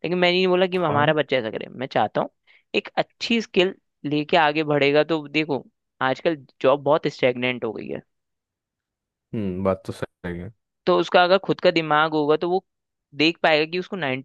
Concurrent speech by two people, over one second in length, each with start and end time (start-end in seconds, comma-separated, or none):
none